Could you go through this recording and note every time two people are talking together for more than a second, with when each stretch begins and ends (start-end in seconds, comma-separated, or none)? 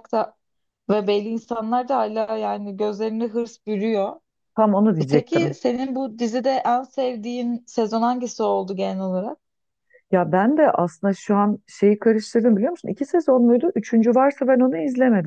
none